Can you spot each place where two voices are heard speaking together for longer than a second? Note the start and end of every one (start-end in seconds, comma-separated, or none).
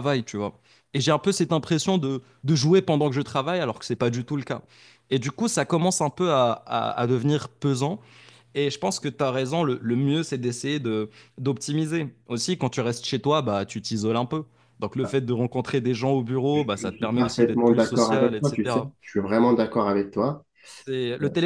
16.5-18.9